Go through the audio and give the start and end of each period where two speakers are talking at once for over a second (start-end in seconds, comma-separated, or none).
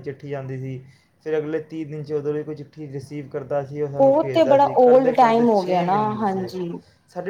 4.3-6.5